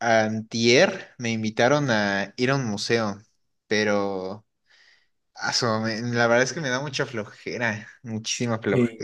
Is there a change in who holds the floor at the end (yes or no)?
no